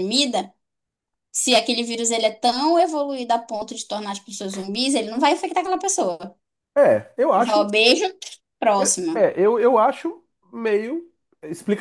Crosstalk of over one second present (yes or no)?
no